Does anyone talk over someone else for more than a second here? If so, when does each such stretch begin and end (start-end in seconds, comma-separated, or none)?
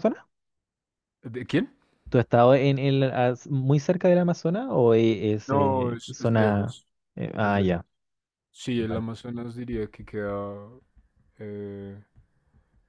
5.5-6.8